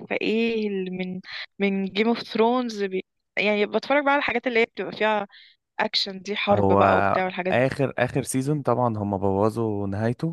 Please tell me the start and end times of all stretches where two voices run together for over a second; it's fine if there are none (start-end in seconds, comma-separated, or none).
none